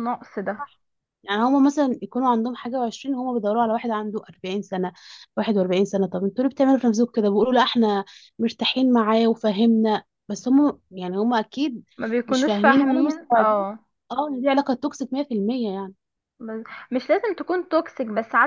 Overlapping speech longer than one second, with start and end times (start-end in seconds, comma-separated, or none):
12.3-13.6